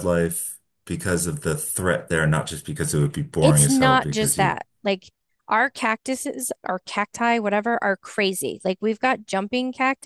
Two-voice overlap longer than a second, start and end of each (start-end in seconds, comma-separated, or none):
3.4-4.6